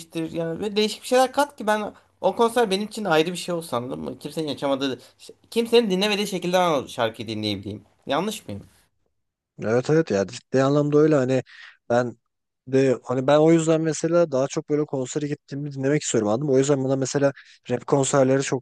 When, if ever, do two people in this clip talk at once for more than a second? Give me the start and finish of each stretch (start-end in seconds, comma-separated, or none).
none